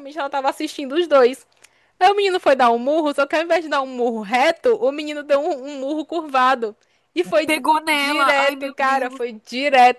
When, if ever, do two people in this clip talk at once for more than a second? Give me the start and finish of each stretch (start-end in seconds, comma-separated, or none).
7.5-9.2